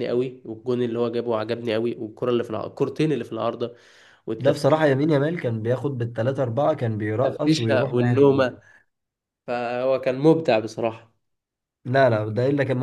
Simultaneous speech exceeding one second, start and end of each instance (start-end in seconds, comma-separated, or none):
7.2-8.5